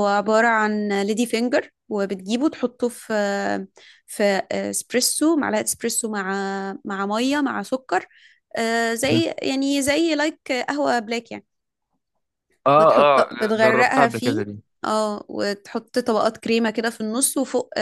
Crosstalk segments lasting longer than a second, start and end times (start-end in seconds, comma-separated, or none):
12.8-14.4